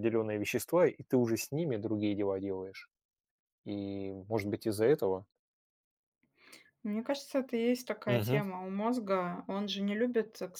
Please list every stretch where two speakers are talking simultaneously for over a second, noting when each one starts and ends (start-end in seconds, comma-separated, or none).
none